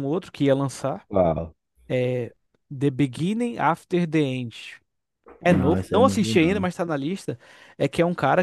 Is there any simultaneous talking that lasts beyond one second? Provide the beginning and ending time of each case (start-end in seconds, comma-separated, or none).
5.5-6.7